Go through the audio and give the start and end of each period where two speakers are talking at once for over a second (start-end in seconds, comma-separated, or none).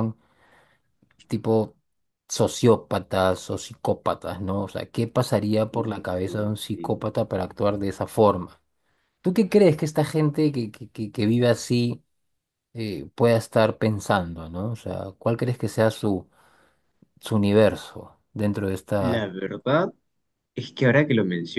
5.7-7.1